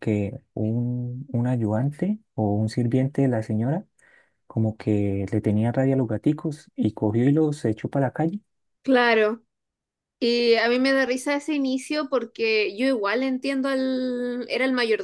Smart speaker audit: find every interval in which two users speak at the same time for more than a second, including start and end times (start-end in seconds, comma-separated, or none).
none